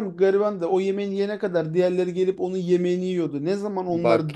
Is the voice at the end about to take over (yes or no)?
no